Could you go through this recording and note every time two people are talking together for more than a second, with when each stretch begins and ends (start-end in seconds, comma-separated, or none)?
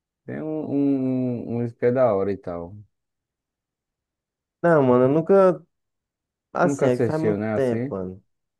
6.6-8.0